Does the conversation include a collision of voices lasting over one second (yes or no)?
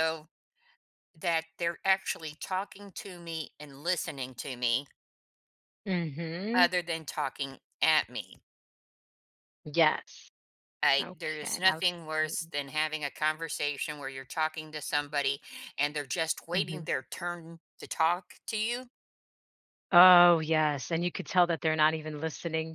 yes